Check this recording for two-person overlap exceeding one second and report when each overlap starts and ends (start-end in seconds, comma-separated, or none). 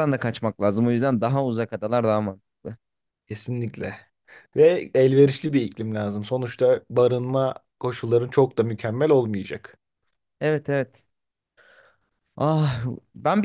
none